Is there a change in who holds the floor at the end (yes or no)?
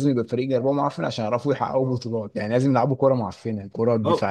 yes